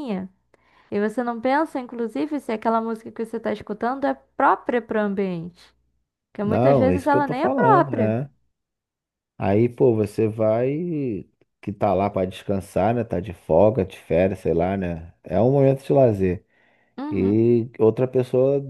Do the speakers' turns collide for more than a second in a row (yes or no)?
yes